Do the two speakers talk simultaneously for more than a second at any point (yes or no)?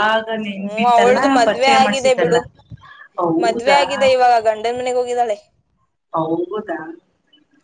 yes